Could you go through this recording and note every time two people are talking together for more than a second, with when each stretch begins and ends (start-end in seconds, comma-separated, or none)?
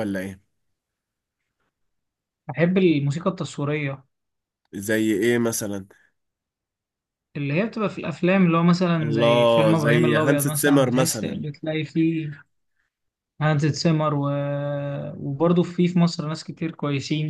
9.0-11.4